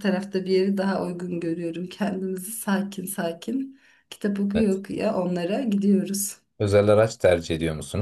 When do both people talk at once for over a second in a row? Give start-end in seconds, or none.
none